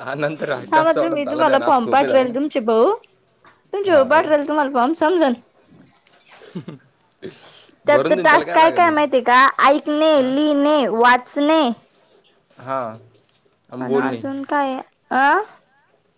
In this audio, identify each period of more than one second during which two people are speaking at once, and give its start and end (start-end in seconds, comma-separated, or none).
0.7-2.3